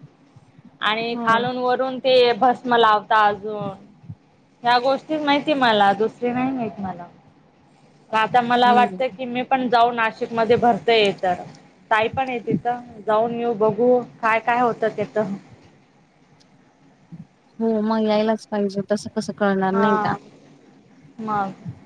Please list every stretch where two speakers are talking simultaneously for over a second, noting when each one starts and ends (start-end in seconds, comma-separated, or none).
none